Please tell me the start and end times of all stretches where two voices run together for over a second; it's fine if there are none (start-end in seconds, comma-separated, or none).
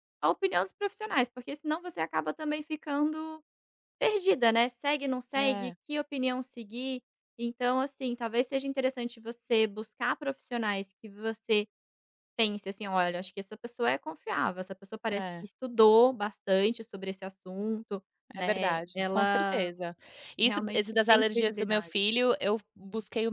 18.3-19.7, 20.4-21.9